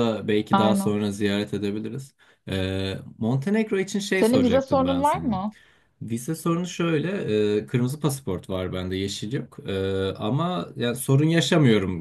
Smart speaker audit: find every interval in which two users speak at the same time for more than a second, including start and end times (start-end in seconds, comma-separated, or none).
4.2-5.4